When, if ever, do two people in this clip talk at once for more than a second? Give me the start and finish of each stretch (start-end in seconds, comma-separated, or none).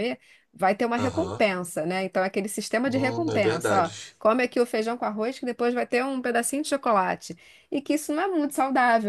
2.8-4.2